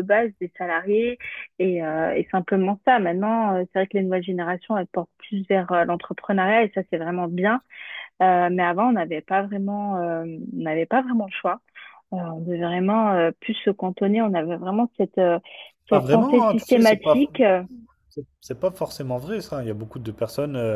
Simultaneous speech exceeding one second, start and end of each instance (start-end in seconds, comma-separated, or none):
15.9-17.2